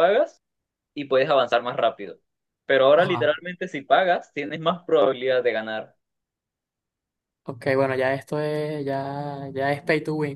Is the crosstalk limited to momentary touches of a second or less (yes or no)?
yes